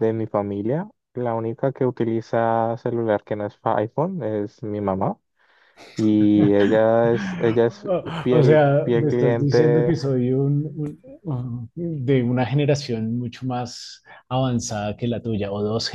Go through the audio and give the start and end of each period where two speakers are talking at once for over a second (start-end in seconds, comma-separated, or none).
8.3-9.9